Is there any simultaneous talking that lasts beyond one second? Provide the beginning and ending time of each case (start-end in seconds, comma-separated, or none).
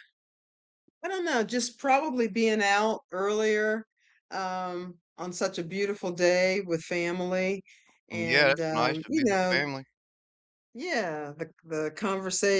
8.1-9.6